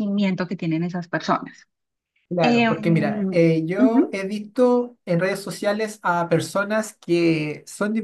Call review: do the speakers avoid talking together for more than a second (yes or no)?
no